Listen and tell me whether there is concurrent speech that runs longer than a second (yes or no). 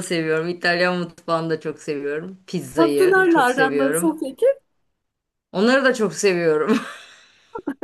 yes